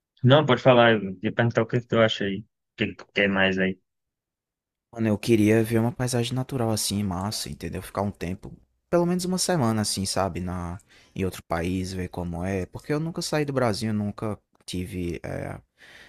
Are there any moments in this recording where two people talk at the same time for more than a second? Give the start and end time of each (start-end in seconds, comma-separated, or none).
none